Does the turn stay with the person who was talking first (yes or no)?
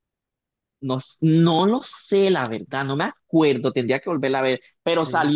yes